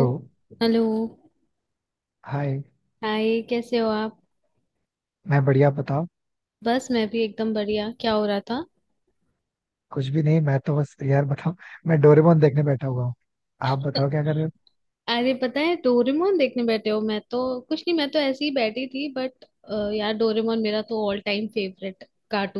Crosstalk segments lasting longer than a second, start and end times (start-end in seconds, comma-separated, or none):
none